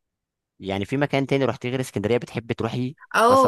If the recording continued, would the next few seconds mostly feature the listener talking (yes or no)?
yes